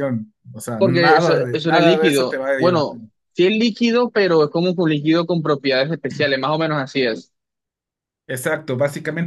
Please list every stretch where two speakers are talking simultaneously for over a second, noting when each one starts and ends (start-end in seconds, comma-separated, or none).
0.8-3.0